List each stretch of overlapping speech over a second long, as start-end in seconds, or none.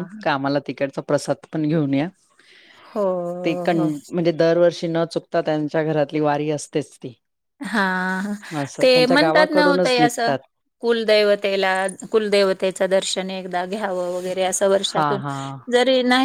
8.8-10.3